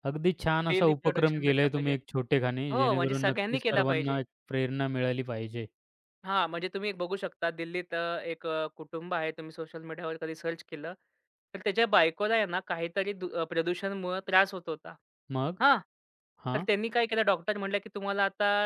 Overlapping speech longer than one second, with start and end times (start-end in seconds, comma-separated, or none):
0.7-1.9, 2.7-4.2